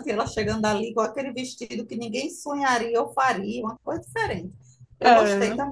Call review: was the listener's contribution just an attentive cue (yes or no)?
no